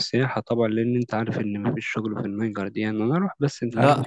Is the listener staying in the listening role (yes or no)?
no